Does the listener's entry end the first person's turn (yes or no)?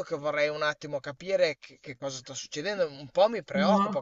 no